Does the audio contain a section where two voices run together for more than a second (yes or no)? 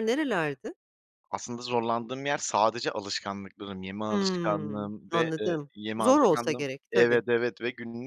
yes